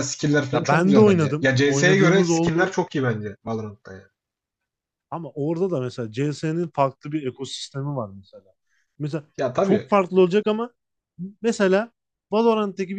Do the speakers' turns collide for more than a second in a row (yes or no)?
yes